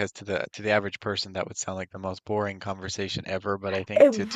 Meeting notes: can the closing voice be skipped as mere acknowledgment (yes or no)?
yes